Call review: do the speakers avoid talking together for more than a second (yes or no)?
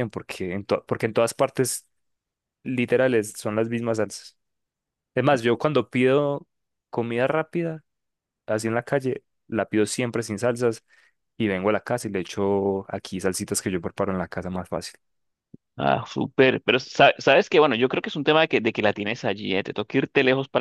yes